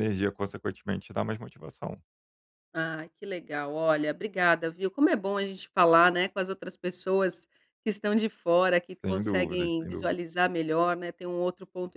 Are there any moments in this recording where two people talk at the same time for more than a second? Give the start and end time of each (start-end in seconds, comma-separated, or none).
8.9-10.3